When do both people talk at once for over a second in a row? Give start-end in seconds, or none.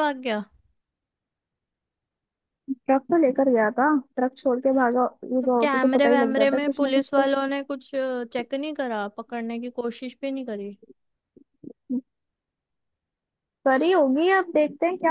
5.4-7.3